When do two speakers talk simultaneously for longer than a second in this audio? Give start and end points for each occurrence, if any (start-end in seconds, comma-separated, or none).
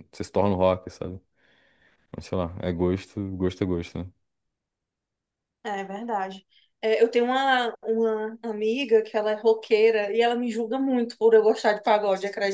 none